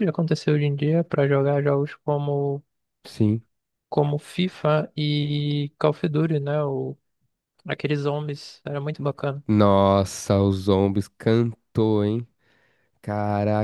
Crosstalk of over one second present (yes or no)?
no